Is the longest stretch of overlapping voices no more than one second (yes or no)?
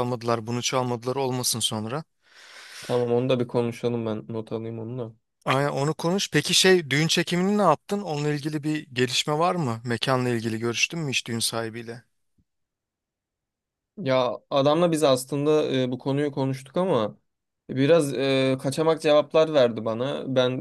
yes